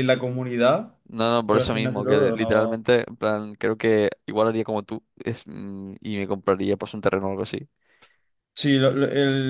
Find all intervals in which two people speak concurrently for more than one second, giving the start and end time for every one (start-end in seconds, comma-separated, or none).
1.5-2.8